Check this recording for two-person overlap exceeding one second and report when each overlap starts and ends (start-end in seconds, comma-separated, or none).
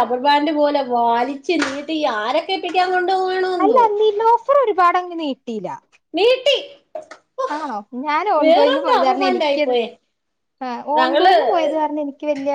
8.4-9.8